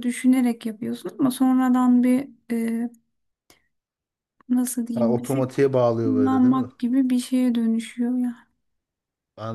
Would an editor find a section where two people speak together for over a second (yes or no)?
yes